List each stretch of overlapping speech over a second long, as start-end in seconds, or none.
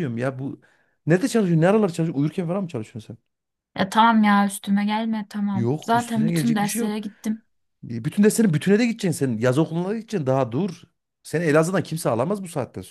5.5-7.0